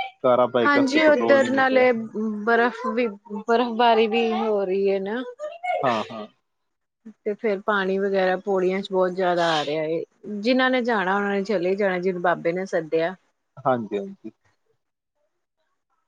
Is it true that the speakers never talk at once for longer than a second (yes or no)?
no